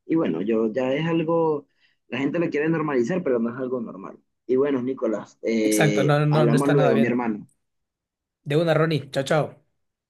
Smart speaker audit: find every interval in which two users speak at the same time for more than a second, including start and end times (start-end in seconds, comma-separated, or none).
5.6-7.3